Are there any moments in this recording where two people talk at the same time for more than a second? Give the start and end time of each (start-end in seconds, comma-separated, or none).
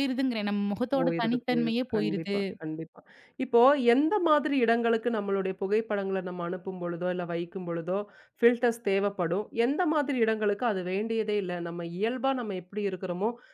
1.0-2.4